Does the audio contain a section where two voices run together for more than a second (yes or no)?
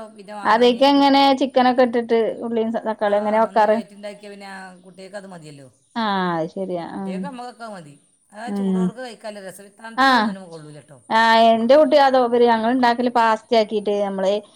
yes